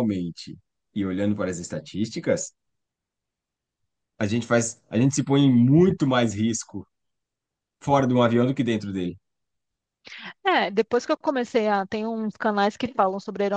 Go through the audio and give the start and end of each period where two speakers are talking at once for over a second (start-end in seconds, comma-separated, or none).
none